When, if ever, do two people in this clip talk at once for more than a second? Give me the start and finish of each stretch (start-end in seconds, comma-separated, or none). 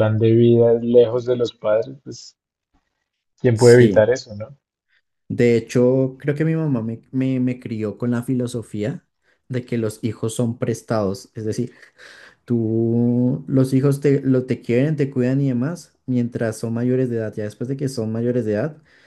none